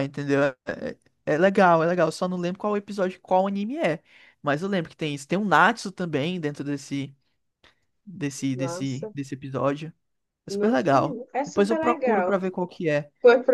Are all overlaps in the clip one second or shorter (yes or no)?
no